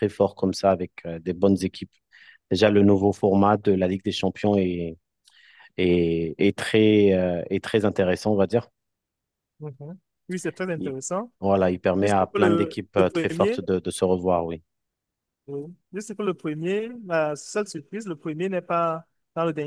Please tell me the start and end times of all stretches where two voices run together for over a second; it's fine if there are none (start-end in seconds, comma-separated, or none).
12.0-13.6